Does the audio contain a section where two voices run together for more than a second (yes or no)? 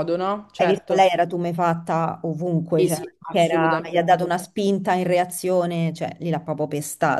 yes